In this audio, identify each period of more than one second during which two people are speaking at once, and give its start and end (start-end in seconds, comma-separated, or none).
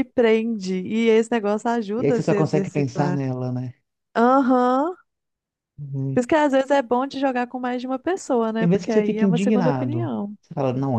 2.0-3.2, 8.6-10.4